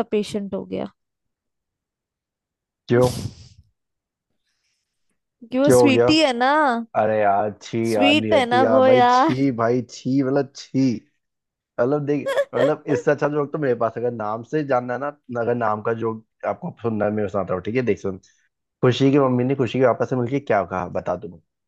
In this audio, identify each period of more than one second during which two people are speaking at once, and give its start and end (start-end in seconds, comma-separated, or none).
7.9-9.3